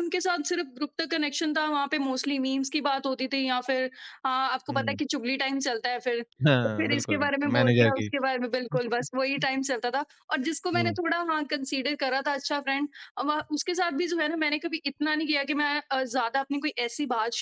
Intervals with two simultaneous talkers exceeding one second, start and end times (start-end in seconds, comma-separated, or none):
6.6-8.1